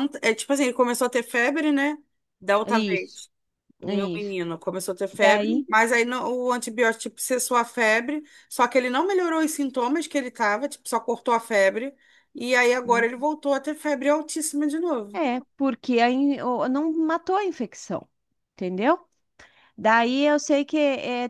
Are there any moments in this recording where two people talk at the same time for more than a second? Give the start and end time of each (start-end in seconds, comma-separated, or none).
none